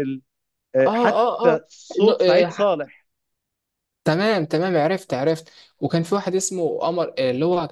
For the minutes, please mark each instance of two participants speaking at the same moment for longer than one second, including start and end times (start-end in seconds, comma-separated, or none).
0.9-2.7